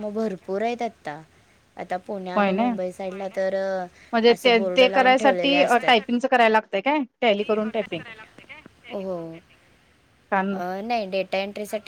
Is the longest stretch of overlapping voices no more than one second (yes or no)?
no